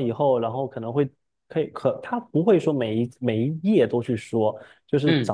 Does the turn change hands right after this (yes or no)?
no